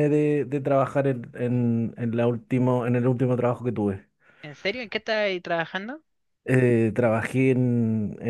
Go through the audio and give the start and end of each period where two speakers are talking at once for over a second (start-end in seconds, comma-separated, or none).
none